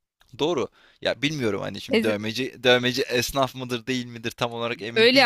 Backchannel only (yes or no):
no